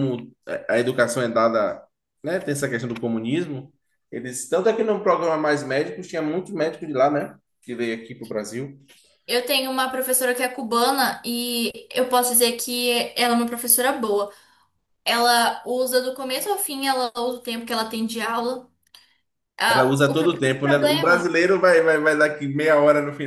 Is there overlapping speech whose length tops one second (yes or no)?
yes